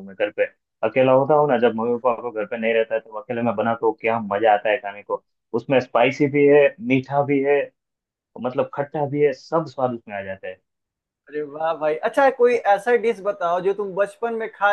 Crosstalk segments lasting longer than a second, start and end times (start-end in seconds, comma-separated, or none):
none